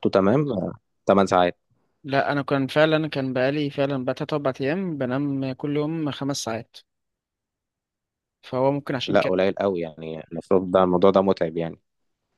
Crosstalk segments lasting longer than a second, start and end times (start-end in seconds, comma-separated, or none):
none